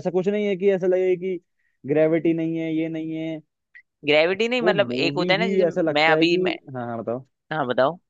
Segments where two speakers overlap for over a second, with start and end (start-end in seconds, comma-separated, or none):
4.6-6.4